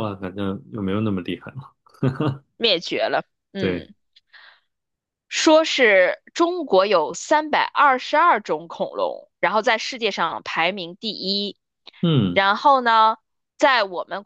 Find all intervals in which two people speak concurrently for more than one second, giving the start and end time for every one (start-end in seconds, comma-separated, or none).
none